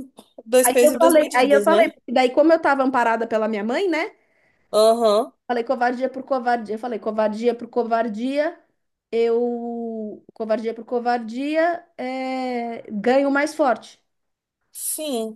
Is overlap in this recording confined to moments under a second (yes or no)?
no